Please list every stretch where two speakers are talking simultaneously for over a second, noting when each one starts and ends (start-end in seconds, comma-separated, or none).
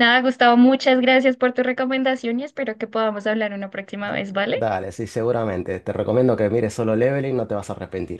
none